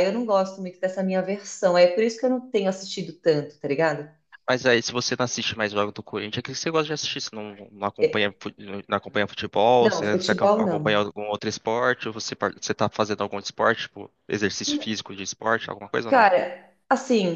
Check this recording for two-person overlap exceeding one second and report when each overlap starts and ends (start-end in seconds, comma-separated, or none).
9.8-11.0